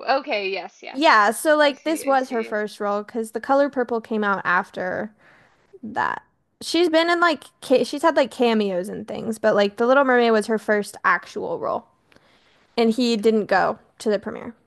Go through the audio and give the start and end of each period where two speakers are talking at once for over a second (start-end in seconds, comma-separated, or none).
0.9-2.6